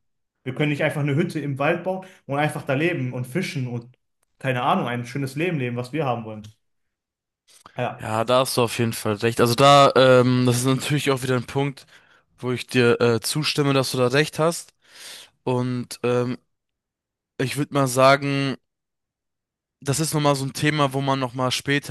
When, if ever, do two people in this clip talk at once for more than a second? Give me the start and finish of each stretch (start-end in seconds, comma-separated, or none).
none